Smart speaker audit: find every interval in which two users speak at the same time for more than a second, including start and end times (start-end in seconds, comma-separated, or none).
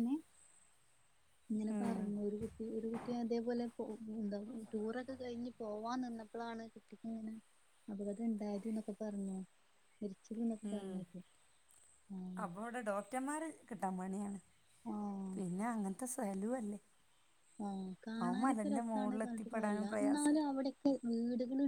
18.2-20.4